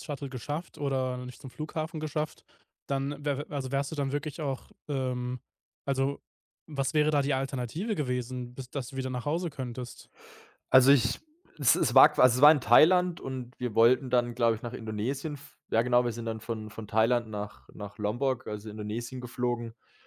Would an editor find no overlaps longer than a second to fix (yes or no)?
yes